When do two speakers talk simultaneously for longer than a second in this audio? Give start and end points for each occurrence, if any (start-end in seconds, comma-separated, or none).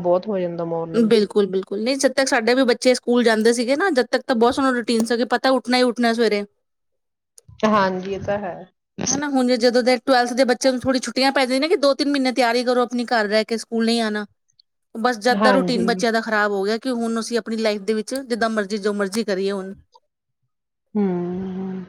none